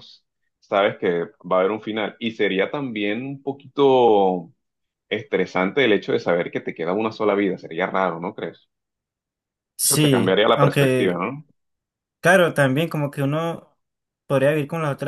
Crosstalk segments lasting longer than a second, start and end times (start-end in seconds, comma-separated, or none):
9.8-11.2